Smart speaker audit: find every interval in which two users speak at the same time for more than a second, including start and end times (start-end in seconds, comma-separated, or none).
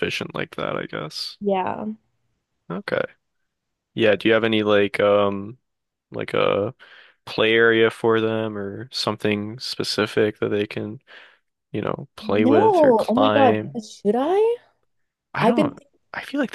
12.5-13.8